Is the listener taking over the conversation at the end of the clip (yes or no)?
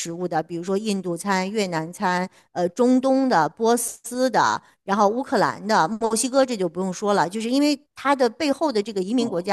no